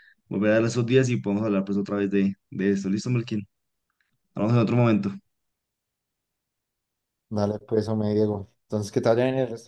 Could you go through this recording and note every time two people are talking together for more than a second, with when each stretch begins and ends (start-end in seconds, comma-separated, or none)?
none